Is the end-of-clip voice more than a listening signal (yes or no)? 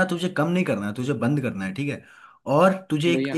no